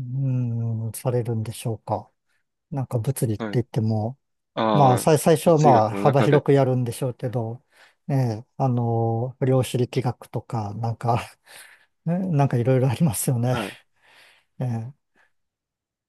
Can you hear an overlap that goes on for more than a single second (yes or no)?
yes